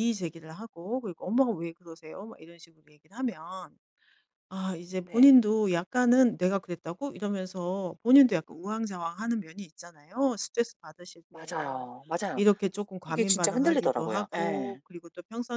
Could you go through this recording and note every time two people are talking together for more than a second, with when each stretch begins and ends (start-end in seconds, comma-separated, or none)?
13.1-14.8